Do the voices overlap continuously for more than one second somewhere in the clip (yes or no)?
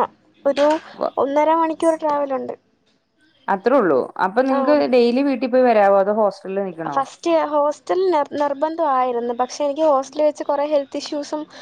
no